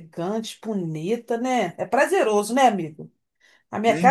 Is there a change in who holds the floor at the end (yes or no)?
no